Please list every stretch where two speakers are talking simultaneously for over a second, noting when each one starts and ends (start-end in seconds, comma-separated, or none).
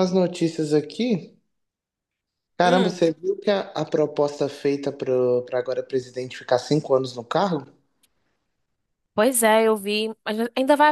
none